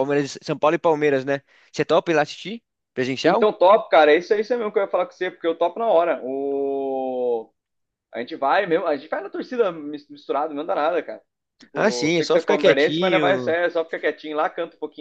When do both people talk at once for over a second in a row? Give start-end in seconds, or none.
11.7-13.5